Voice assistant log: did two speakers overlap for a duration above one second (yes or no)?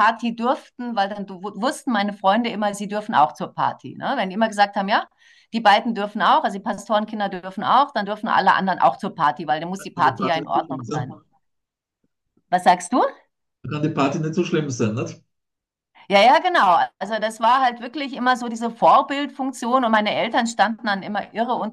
yes